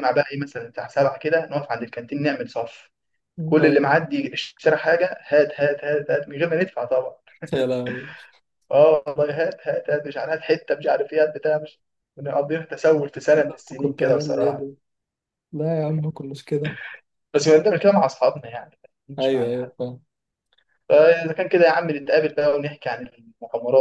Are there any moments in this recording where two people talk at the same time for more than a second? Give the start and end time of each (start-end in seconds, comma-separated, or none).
13.4-14.7